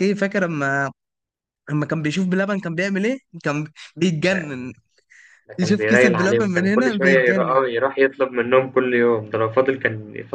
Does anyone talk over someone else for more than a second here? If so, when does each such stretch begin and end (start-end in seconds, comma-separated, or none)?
5.6-7.6